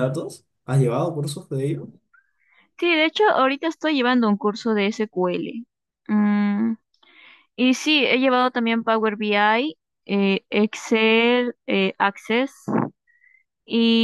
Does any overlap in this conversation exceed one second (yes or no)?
no